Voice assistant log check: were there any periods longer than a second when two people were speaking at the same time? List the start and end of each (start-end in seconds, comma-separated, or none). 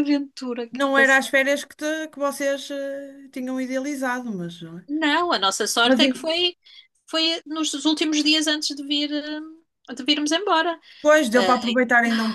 none